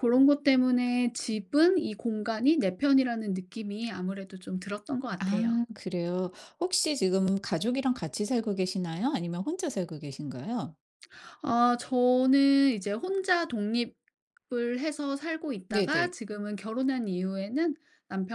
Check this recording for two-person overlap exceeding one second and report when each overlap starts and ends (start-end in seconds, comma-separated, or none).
none